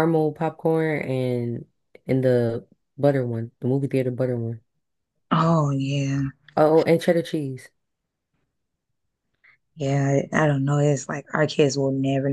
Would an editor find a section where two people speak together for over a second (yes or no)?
no